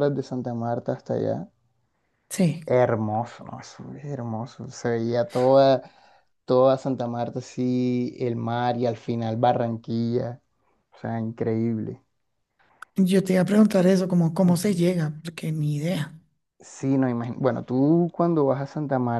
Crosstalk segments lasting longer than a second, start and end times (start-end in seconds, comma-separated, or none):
none